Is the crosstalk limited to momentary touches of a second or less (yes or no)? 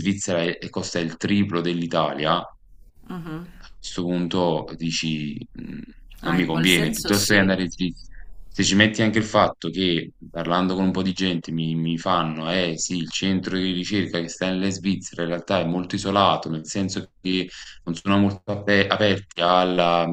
no